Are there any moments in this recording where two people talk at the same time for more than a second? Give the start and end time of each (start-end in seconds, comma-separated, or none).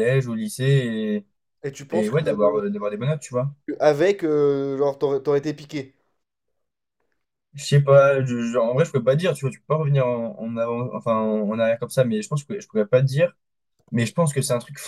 none